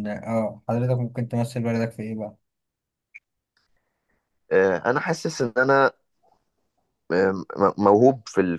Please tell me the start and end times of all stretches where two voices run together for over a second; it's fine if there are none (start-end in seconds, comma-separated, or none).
none